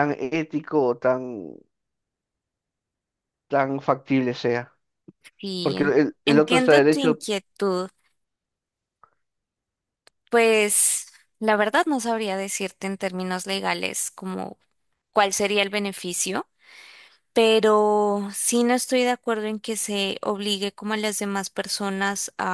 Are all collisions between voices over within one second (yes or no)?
no